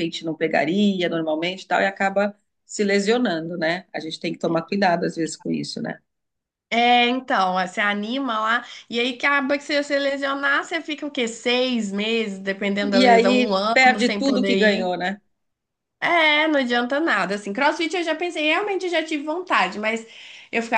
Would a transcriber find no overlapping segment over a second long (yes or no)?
no